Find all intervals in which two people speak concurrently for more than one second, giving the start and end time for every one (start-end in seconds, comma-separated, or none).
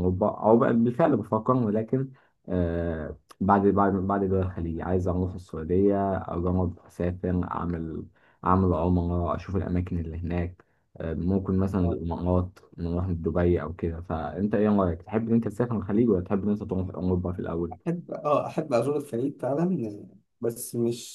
none